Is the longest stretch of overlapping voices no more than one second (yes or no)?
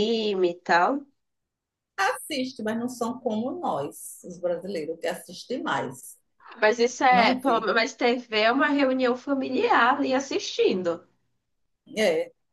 yes